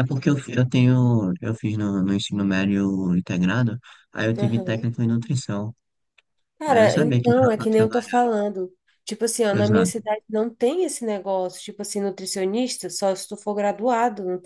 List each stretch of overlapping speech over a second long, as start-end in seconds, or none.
6.7-8.2